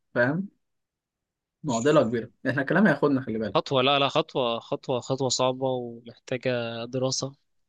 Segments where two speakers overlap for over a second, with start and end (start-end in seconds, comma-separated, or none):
none